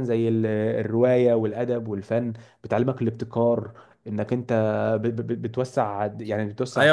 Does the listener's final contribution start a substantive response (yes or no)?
yes